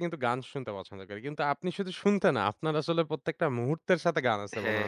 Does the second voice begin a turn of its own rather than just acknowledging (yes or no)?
yes